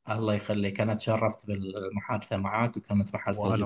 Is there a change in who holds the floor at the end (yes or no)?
no